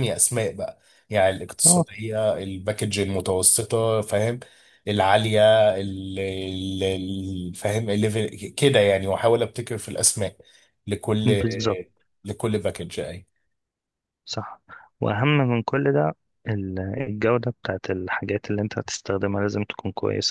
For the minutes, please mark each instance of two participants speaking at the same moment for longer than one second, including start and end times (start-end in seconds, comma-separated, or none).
none